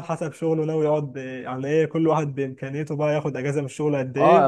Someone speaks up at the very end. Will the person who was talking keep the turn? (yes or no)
no